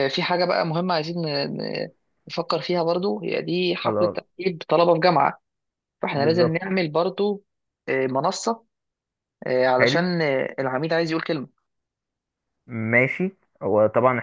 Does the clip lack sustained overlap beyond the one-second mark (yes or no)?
yes